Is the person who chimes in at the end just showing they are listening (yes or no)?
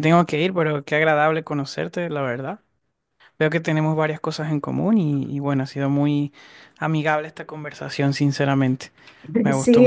no